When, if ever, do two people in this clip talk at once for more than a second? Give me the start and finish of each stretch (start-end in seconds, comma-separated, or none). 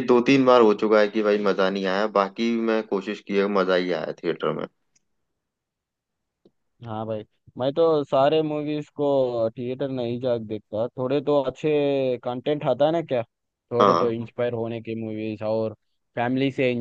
none